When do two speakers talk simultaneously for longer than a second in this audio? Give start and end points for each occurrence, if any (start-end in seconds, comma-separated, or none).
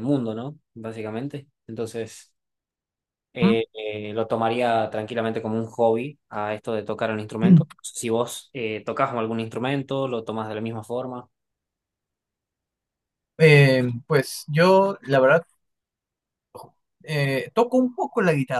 none